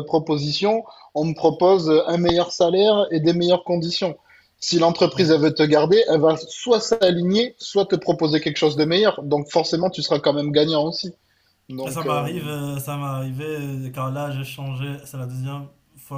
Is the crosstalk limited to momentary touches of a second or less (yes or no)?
yes